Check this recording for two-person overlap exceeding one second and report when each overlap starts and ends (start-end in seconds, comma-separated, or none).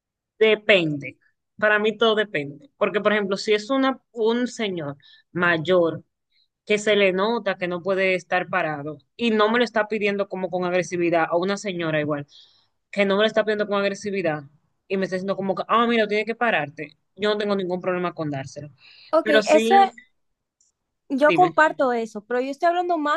none